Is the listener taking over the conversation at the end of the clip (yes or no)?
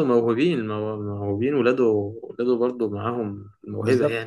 yes